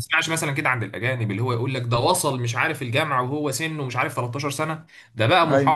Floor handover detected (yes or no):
no